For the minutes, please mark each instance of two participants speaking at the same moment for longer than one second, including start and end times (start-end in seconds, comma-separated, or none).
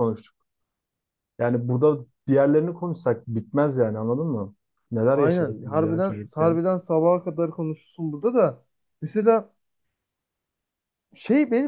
5.1-6.6